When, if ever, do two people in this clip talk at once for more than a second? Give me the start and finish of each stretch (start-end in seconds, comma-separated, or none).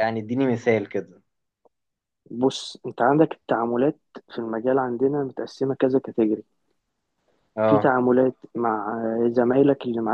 none